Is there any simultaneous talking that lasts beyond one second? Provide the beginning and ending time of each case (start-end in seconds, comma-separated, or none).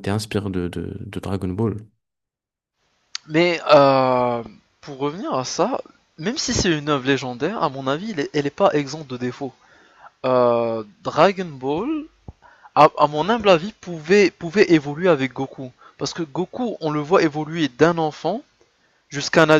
none